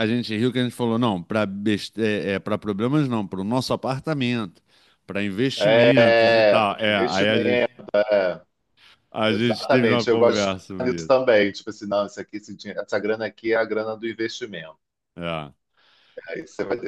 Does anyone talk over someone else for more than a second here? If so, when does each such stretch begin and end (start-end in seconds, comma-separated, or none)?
6.0-7.7, 9.3-11.1